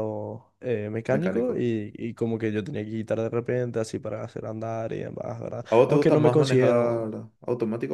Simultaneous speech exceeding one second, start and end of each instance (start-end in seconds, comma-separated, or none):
5.7-7.1